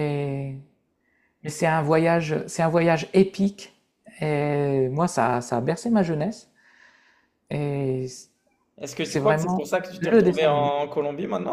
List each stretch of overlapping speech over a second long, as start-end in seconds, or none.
9.0-10.7